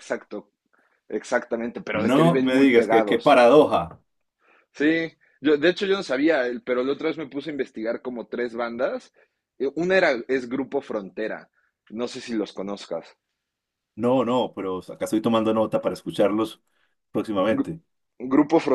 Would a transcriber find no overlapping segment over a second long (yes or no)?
no